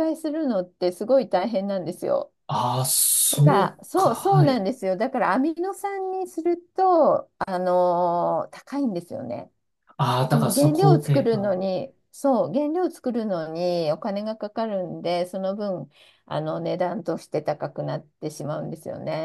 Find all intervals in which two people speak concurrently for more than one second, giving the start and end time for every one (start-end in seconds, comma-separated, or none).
3.3-4.6, 10.3-11.6